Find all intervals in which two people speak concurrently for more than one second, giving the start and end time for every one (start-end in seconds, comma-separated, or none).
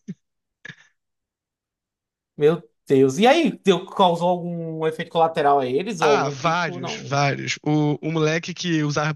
6.0-7.2